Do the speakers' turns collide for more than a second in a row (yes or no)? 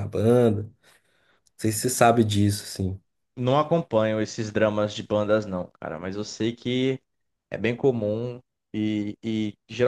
no